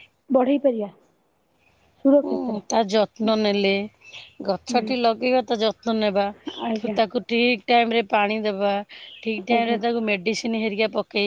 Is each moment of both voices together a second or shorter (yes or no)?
yes